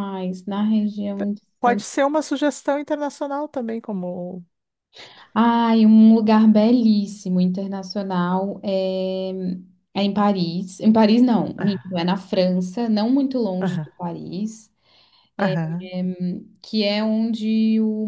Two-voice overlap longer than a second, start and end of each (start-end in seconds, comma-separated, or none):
none